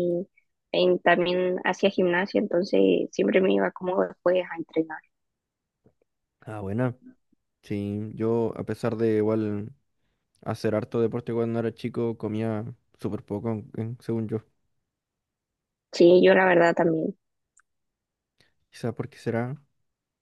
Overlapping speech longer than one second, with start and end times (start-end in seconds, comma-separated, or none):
none